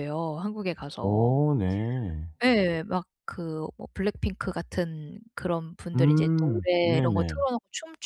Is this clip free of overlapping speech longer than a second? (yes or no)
no